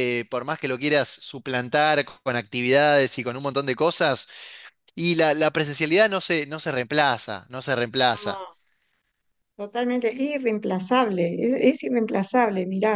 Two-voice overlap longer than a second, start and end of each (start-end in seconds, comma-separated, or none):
none